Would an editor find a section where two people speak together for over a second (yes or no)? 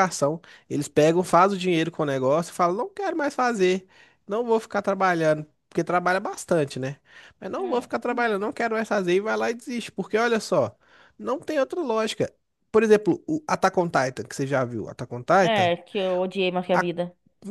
no